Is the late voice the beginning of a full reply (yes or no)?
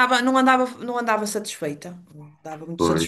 no